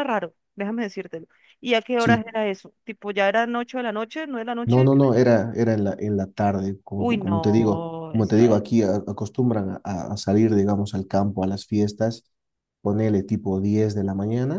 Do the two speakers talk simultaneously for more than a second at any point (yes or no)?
yes